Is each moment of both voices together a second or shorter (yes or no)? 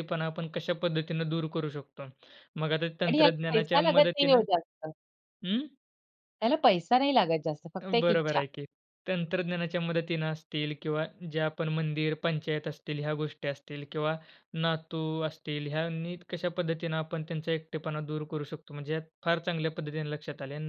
no